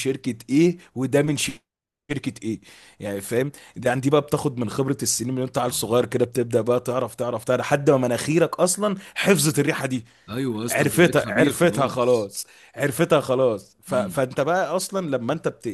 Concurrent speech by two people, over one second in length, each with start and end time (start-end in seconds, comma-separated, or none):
10.7-12.3